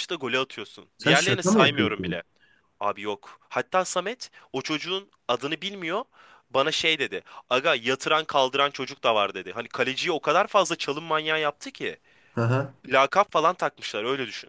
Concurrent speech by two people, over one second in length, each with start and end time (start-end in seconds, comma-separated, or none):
1.0-2.2